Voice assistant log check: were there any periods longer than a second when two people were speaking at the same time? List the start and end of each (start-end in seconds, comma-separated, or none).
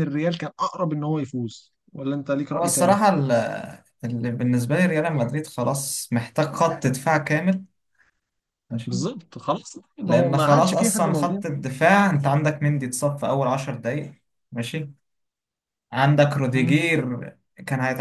10.1-11.4